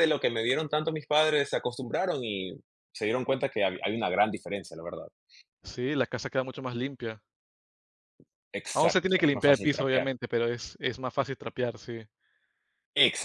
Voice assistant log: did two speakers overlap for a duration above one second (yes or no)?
yes